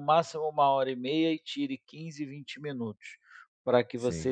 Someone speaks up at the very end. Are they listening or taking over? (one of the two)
listening